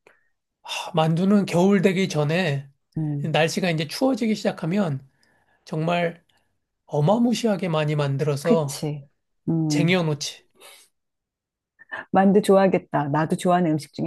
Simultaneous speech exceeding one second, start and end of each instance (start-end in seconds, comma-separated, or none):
none